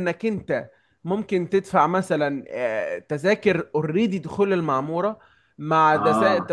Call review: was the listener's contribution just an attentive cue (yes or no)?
yes